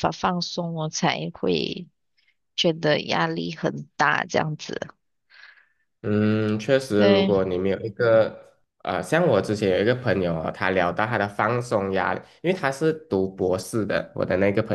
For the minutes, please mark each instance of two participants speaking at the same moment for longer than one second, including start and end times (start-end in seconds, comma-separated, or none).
none